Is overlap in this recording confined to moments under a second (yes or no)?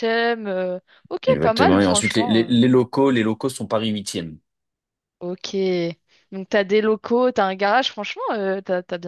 no